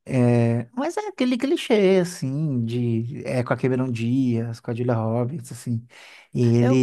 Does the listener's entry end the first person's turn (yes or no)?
no